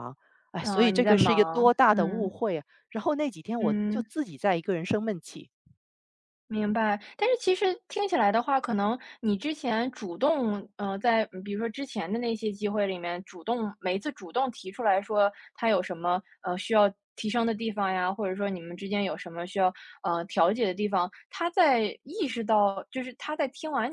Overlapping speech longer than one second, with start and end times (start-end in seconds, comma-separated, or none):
0.6-2.3